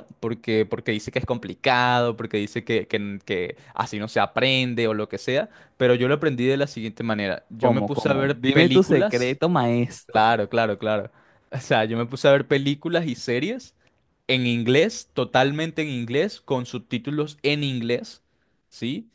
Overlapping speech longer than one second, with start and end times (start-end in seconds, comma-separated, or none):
7.6-9.4